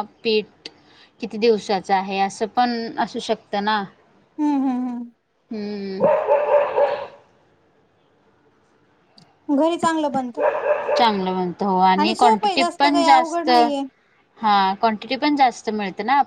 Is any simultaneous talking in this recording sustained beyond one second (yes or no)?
yes